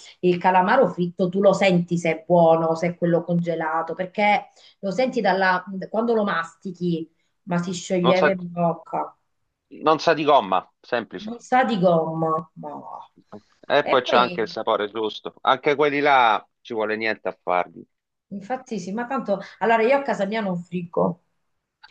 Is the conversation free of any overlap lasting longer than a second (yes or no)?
yes